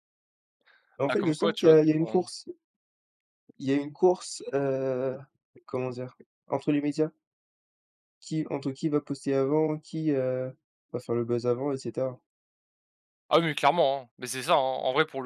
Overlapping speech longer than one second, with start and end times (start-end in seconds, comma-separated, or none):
1.1-2.3